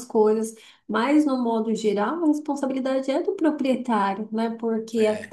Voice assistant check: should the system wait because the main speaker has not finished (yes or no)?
yes